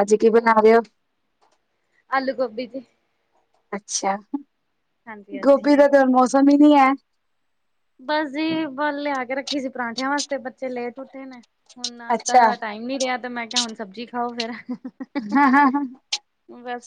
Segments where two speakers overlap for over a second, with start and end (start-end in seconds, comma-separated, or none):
none